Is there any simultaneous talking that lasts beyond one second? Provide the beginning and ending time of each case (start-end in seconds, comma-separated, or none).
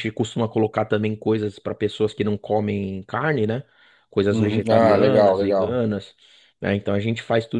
4.3-5.8